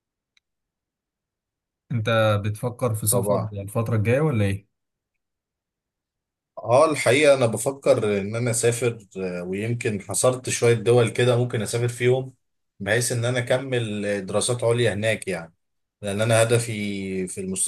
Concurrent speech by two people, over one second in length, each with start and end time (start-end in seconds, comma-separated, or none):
none